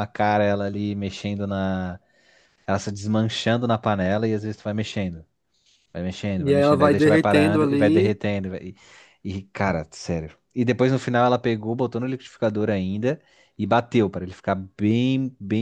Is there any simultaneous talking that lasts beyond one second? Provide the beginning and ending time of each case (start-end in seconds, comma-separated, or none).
6.4-8.2